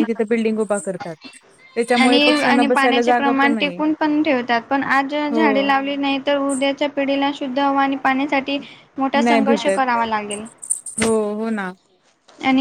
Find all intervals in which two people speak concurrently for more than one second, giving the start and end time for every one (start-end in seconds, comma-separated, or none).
2.0-3.8